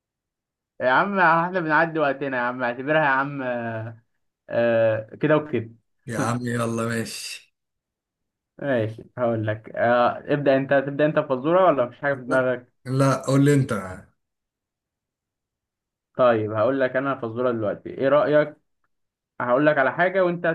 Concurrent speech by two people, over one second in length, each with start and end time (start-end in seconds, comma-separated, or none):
none